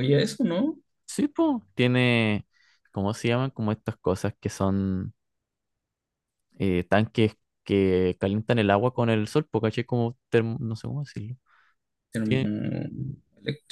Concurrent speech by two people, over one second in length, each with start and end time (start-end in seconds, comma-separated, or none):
none